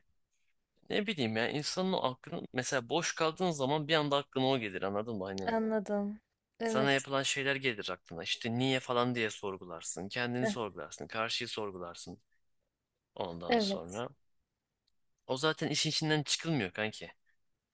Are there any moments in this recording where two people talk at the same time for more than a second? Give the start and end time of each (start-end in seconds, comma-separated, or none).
none